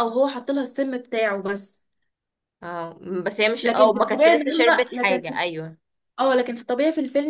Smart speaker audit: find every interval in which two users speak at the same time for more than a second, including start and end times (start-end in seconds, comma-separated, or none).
3.6-5.4